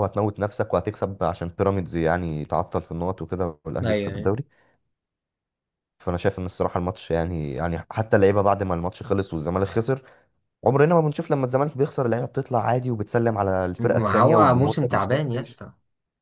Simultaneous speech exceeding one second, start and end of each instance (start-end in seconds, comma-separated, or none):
13.8-15.3